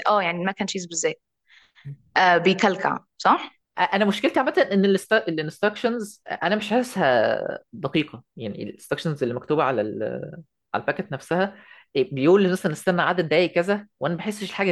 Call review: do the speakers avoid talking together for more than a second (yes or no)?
yes